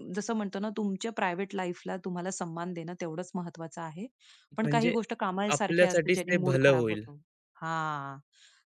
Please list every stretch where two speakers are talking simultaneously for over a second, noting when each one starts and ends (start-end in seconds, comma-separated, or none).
5.6-7.0